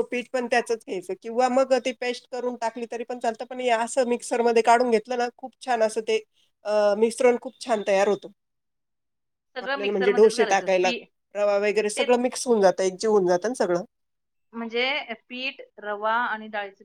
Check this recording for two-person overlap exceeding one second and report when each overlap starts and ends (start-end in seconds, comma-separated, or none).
9.6-10.9